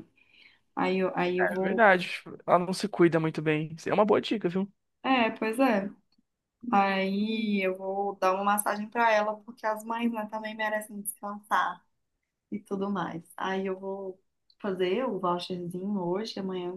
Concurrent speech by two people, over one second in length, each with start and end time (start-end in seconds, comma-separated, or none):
none